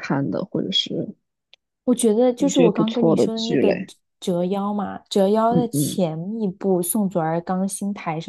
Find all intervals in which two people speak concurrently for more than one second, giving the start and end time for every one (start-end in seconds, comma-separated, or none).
2.4-3.8